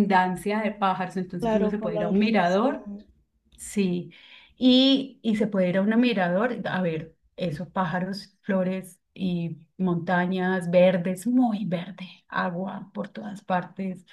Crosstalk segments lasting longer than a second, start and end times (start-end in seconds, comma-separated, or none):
1.4-2.8